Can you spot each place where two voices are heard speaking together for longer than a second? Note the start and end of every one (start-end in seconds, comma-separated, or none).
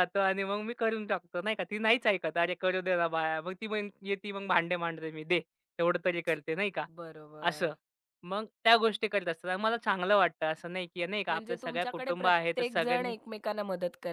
11.3-13.1